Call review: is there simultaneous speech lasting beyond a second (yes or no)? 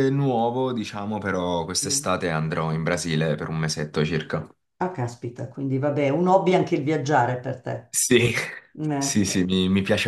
no